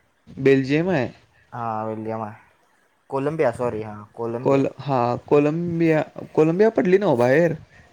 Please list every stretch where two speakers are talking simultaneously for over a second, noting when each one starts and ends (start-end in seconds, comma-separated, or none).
none